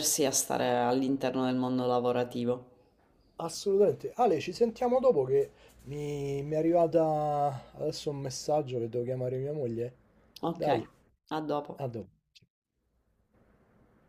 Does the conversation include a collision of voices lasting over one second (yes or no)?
no